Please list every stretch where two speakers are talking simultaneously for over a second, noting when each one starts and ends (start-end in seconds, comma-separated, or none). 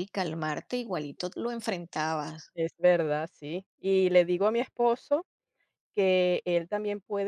none